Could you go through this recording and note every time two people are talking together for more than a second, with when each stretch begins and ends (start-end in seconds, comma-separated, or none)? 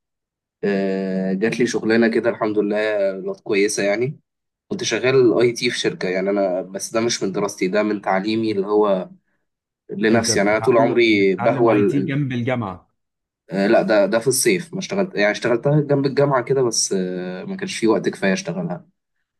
10.1-12.2